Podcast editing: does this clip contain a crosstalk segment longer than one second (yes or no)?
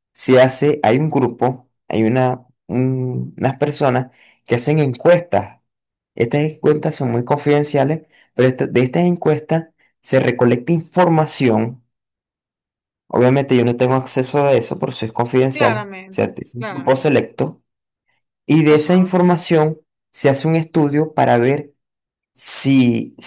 yes